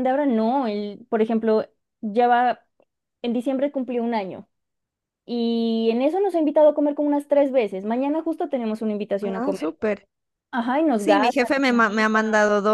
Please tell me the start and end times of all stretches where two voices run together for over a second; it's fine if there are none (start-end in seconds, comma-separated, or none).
10.9-12.2